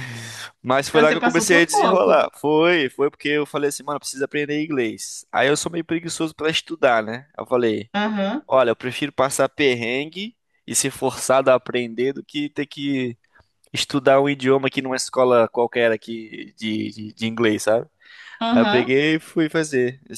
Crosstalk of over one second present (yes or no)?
yes